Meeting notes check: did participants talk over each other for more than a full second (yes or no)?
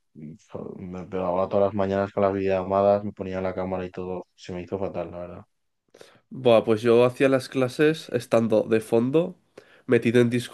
no